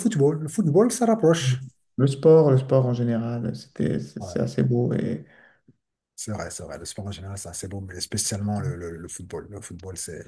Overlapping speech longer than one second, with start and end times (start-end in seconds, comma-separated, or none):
none